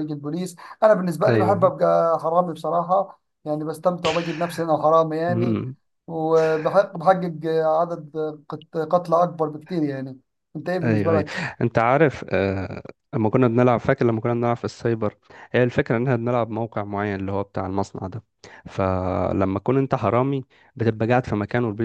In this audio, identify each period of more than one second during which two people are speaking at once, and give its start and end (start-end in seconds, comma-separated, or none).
none